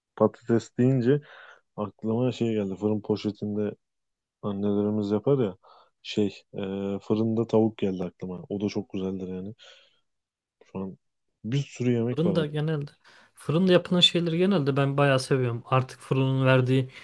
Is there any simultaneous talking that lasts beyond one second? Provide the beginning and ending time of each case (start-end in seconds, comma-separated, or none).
none